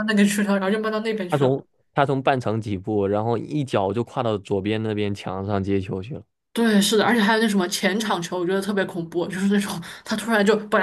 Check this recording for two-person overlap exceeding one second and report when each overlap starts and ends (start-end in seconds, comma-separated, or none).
none